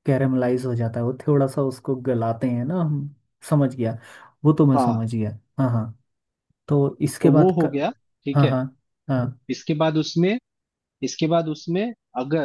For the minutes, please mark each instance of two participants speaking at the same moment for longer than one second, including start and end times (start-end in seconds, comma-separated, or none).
none